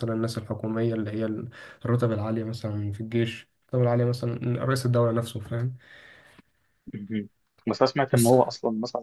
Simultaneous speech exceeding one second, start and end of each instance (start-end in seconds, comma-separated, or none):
none